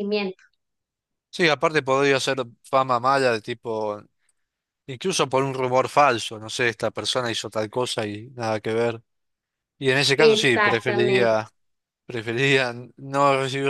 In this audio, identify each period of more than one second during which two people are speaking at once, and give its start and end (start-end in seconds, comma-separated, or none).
10.2-11.4